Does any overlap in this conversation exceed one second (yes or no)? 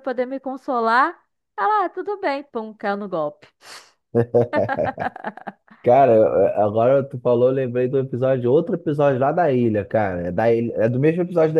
no